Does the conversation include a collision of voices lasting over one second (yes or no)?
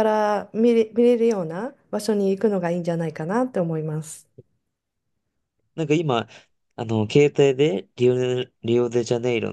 no